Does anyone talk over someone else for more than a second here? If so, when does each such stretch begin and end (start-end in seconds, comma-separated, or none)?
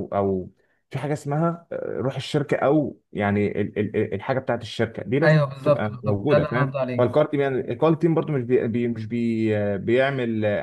5.2-7.1